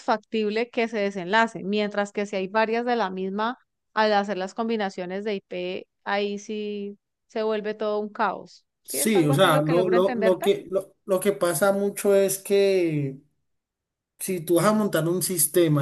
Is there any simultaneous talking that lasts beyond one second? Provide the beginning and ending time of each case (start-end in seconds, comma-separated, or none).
8.8-10.5